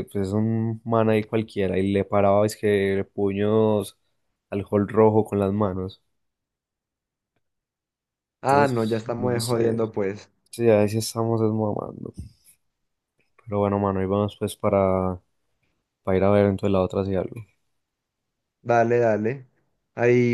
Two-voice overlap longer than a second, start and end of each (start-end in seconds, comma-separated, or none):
8.5-9.8